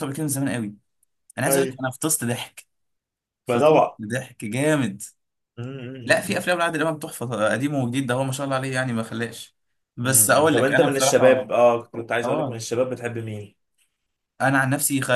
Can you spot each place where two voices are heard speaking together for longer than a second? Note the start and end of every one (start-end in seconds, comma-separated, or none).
10.0-11.6